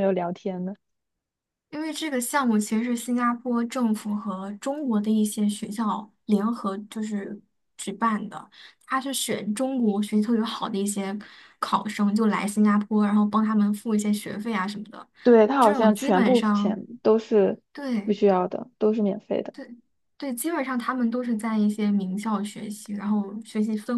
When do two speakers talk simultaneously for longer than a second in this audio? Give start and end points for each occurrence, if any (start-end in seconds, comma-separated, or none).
15.6-16.8